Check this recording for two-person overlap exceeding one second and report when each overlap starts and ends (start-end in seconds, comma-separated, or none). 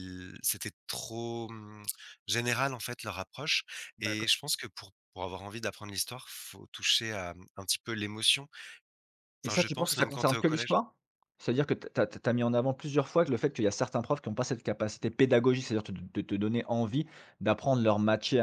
9.4-10.8